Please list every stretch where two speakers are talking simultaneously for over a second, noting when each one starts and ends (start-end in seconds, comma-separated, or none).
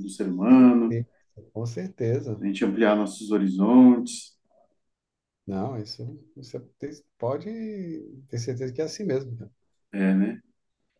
none